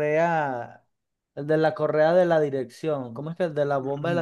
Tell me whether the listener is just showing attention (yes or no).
no